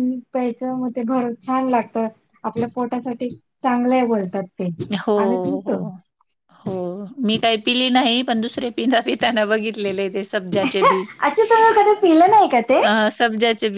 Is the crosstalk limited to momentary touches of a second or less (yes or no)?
yes